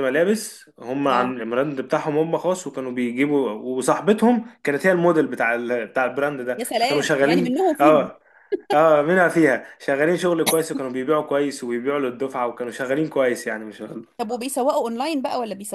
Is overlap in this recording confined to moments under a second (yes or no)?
no